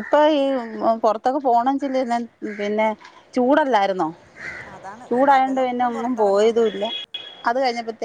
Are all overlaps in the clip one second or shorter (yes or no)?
no